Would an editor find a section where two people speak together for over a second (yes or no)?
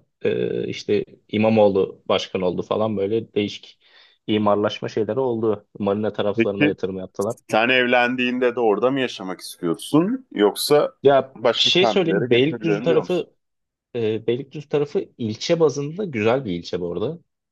yes